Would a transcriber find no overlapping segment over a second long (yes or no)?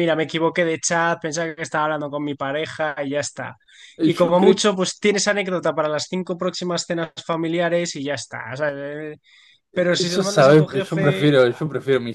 no